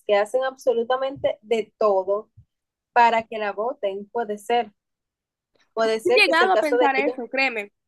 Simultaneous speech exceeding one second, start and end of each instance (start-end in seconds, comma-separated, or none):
5.8-7.2